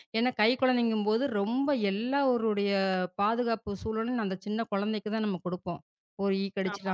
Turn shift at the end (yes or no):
no